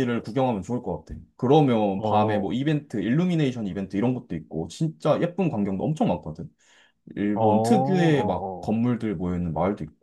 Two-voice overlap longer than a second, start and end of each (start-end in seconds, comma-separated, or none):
7.3-8.7